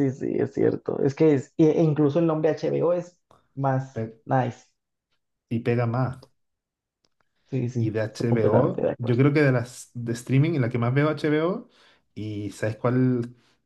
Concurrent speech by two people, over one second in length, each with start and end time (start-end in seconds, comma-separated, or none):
7.8-9.2